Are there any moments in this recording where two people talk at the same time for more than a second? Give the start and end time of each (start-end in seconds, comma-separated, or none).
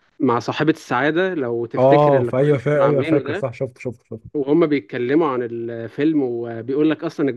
1.8-3.5